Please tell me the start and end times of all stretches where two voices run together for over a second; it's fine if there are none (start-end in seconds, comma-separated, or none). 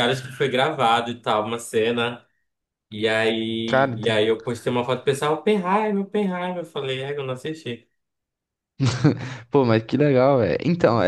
none